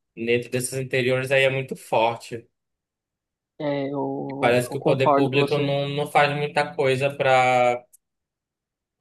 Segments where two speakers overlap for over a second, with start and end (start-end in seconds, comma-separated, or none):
4.4-5.8